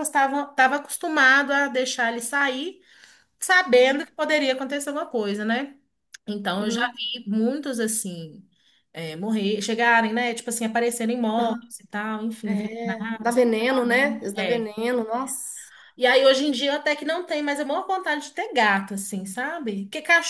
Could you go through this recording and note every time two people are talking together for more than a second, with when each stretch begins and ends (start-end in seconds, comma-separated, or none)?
12.4-14.7